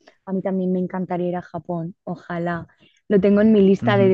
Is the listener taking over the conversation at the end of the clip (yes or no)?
no